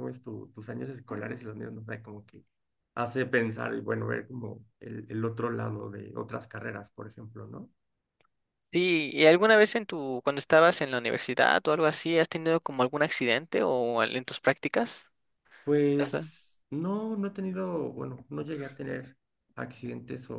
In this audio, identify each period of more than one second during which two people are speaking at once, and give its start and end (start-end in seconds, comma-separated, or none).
none